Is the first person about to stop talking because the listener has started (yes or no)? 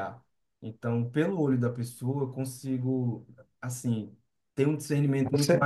no